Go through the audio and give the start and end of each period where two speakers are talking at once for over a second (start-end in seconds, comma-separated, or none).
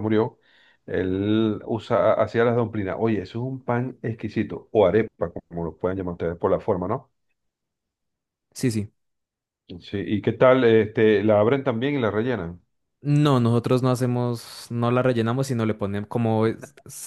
none